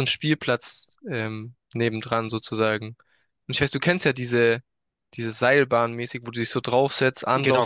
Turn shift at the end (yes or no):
no